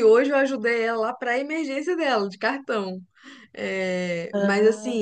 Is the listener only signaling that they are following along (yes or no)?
yes